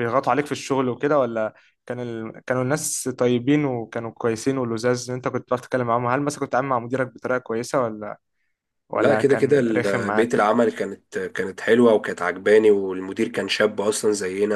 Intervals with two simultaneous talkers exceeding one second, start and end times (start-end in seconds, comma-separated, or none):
8.9-10.4